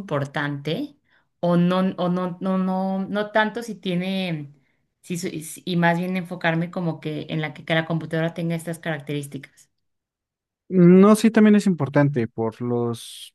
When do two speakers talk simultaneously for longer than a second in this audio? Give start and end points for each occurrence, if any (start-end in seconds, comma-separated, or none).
none